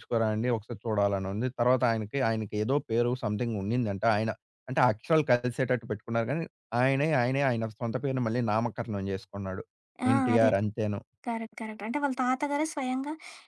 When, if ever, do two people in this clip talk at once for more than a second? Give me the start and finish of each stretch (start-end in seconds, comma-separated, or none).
none